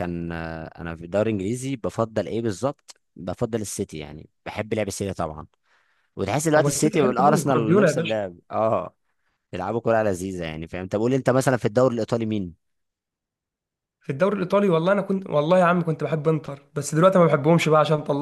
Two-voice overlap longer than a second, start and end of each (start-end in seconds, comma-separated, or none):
6.6-8.1